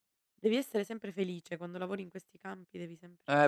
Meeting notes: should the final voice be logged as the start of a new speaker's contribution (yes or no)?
yes